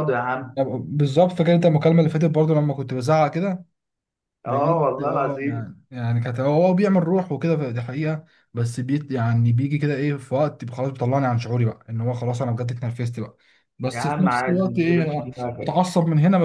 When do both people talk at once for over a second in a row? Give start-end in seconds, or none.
4.5-5.7, 13.9-15.8